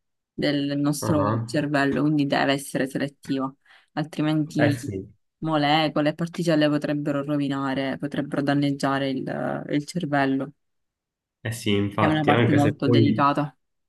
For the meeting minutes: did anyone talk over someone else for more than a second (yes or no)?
yes